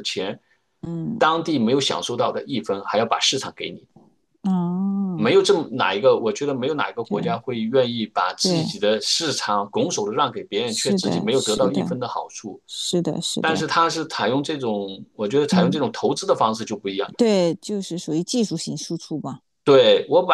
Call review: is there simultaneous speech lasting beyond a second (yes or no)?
yes